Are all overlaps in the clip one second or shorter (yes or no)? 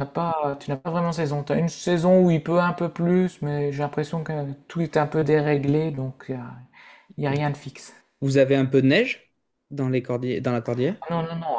yes